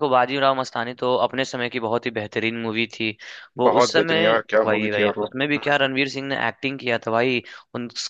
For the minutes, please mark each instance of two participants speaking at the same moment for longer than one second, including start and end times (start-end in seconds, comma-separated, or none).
3.7-5.8